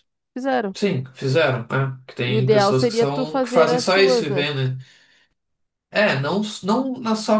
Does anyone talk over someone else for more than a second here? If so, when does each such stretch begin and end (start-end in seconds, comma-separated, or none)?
2.3-4.5